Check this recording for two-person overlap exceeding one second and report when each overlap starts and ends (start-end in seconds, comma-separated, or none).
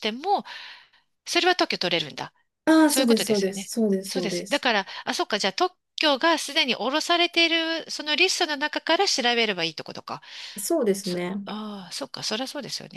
2.9-4.7